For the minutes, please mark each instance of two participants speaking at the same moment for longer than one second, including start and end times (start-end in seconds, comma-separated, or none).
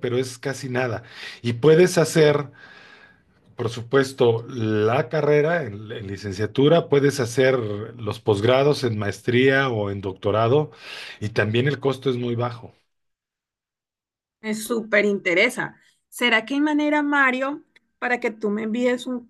none